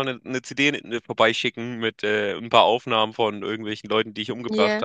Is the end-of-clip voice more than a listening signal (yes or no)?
no